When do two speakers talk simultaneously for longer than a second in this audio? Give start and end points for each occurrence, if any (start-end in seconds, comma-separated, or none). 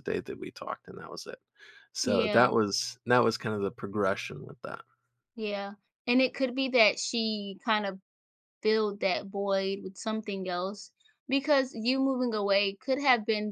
none